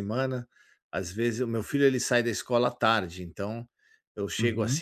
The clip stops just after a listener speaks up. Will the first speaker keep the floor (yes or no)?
yes